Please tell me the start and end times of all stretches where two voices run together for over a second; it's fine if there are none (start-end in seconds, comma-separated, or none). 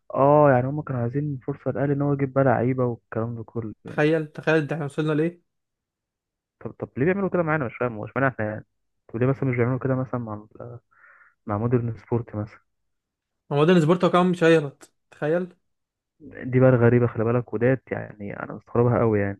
none